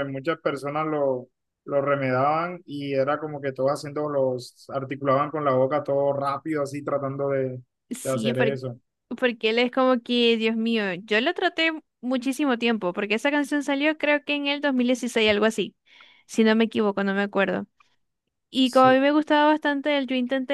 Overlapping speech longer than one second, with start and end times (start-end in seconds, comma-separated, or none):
none